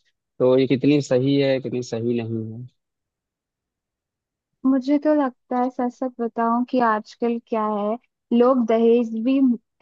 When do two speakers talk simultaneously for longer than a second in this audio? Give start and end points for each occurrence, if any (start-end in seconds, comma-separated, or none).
none